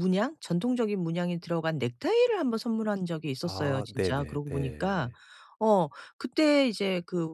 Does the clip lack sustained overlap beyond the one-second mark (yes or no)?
no